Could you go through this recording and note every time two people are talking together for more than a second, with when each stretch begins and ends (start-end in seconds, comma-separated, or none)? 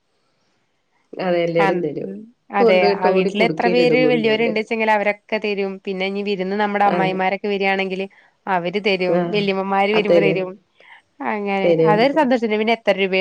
2.7-4.5